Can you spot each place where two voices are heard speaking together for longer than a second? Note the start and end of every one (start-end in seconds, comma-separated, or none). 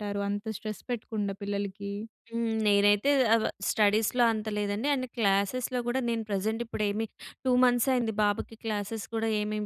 none